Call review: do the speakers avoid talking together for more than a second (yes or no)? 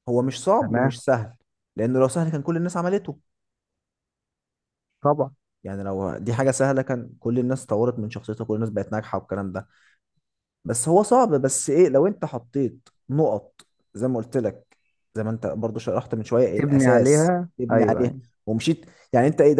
no